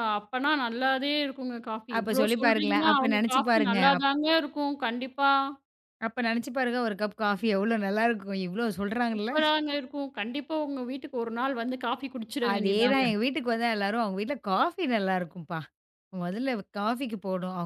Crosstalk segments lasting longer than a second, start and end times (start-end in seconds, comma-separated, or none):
2.0-4.1